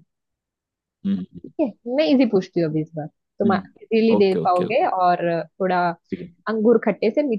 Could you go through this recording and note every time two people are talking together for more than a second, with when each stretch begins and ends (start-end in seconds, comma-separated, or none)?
3.2-4.9